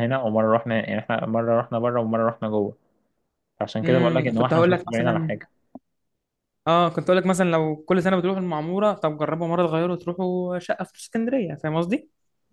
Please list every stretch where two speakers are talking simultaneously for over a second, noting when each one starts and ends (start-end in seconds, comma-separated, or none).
3.8-5.3